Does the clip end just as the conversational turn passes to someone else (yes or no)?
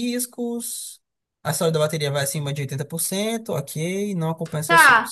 yes